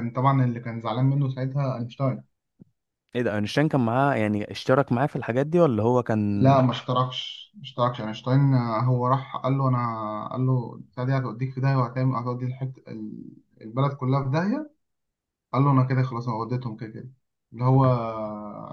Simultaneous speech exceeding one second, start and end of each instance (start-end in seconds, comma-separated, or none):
none